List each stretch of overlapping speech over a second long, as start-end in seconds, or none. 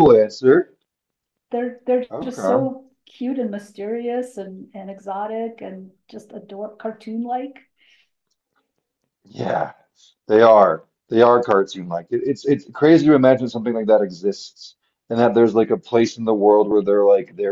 none